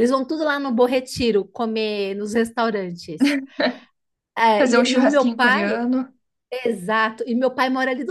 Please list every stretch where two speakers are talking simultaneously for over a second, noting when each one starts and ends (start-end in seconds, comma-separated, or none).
4.6-5.8